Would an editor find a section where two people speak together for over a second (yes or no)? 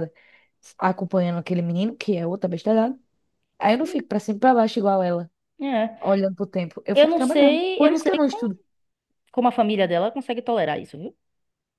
yes